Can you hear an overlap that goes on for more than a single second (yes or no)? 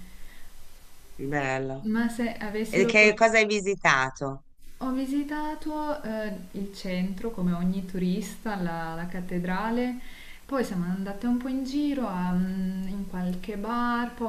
no